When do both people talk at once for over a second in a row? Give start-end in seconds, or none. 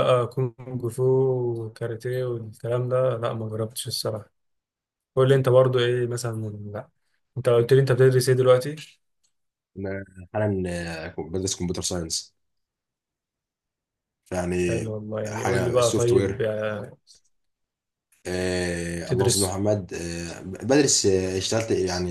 14.7-16.5